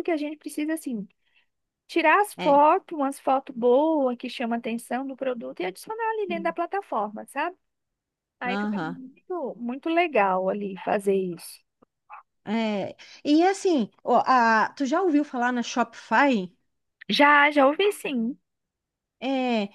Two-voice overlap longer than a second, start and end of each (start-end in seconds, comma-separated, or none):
none